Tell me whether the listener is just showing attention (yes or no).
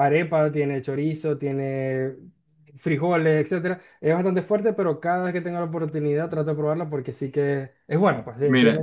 no